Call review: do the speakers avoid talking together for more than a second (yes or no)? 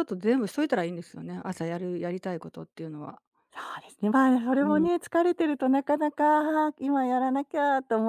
yes